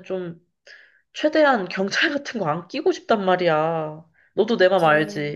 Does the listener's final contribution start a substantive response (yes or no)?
yes